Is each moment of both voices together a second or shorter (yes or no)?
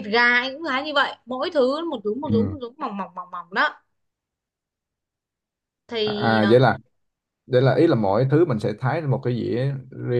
yes